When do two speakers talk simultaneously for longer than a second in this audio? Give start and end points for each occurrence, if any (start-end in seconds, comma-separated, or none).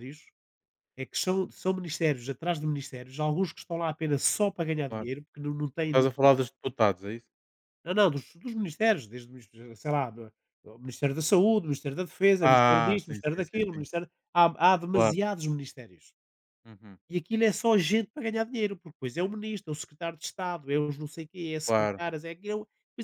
12.4-13.8